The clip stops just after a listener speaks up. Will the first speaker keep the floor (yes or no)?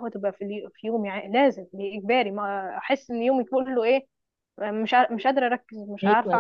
yes